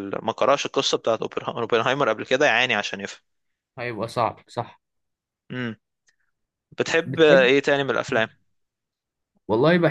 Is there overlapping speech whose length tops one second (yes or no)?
no